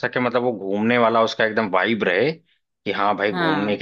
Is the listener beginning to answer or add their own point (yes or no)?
no